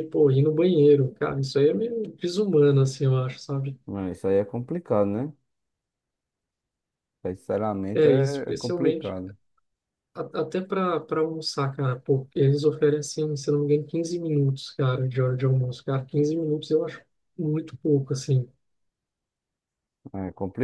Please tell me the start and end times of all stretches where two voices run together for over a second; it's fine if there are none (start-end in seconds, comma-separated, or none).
7.9-9.2